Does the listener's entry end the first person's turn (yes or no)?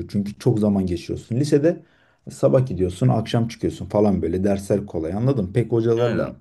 no